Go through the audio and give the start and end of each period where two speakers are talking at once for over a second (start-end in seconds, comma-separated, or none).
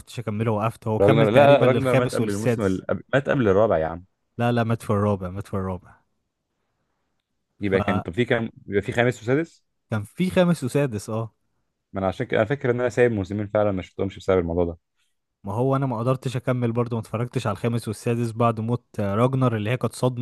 1.0-2.8